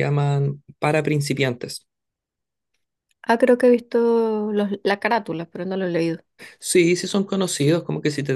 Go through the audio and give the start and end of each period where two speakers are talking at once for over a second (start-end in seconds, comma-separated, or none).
none